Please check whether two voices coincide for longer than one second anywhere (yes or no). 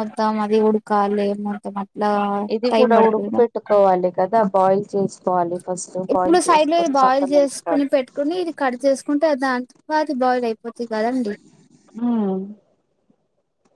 yes